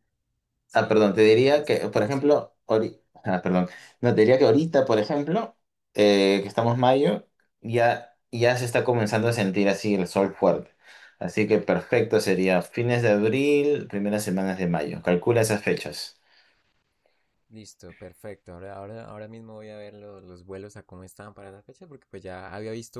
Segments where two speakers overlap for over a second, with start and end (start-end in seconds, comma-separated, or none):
0.7-2.4